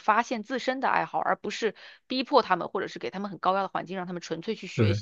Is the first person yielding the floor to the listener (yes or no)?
no